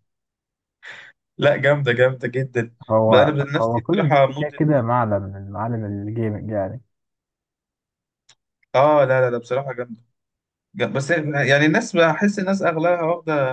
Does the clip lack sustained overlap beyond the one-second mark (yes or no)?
no